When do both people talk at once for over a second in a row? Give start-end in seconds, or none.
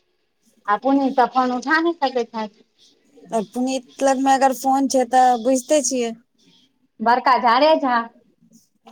none